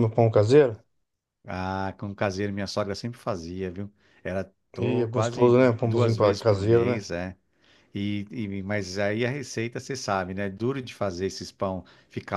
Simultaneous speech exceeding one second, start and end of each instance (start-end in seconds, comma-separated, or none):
4.8-7.0